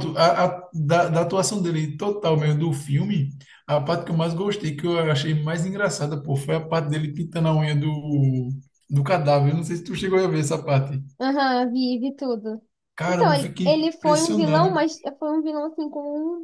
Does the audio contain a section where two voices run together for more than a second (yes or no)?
yes